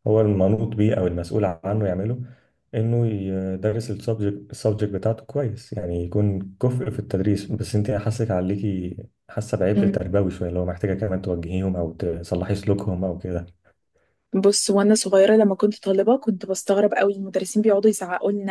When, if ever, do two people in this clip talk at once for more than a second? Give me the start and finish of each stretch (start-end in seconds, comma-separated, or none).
none